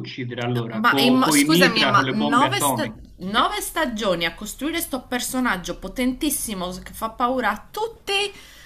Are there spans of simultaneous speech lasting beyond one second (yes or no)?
yes